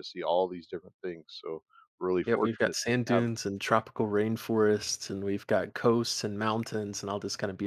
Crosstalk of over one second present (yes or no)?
yes